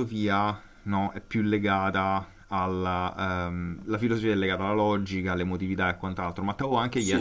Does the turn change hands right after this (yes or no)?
no